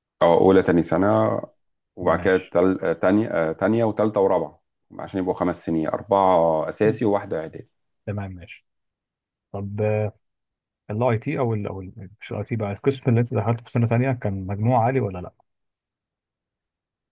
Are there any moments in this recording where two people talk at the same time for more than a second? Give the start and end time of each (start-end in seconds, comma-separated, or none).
none